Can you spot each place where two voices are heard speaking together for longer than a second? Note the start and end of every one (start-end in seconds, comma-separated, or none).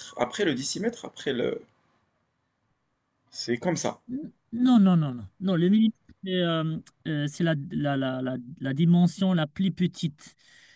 none